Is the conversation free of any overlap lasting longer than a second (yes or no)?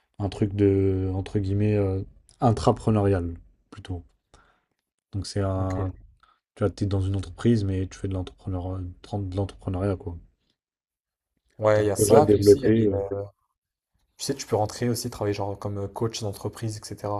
no